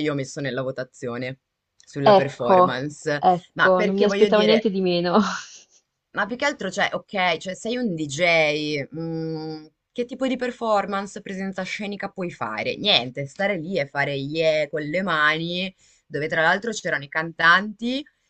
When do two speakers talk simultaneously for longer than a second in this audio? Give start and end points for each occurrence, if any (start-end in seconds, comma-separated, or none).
2.2-4.7